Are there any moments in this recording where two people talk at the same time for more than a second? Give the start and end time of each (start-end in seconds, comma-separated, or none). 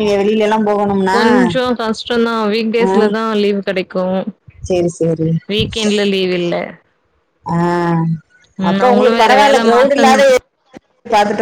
8.7-10.3